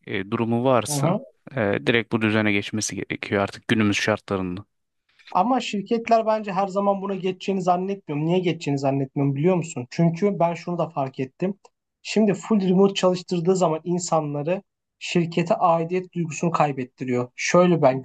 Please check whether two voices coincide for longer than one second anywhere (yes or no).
no